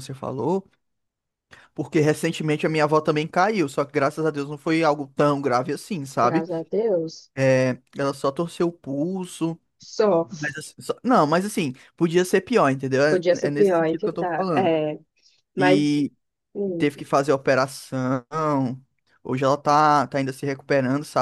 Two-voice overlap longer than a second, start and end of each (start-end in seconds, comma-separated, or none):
13.1-14.7